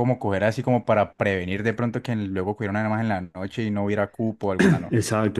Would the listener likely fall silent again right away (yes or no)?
no